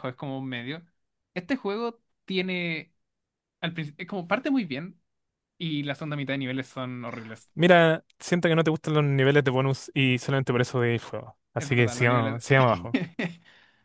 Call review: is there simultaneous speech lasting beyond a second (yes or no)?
yes